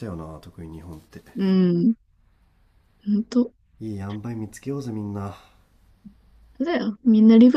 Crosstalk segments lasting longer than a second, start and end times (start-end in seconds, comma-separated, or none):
none